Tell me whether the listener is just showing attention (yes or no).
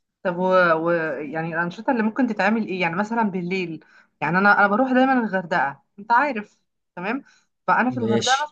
yes